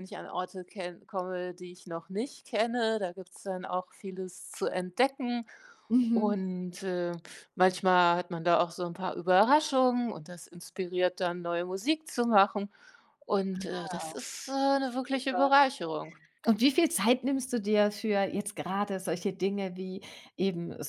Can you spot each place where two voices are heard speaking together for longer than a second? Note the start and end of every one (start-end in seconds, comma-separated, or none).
none